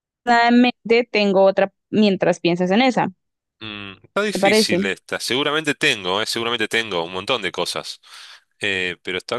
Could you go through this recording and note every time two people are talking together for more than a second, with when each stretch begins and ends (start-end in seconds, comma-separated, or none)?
none